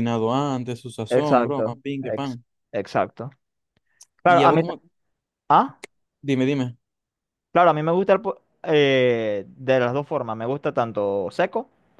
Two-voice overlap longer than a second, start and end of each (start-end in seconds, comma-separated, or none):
1.1-2.4